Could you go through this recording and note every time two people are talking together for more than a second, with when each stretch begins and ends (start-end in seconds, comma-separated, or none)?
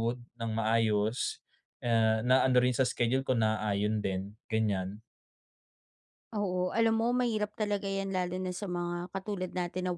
none